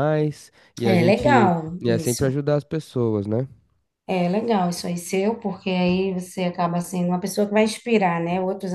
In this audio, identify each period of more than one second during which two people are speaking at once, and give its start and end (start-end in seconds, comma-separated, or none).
0.8-2.2